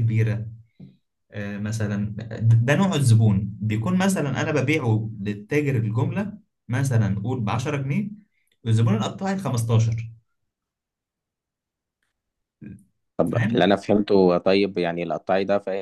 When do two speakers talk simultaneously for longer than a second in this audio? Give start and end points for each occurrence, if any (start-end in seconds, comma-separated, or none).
none